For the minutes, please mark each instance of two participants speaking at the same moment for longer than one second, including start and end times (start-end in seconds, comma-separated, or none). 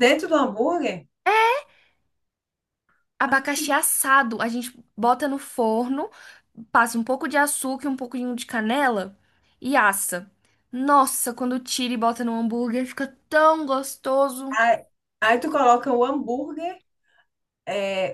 none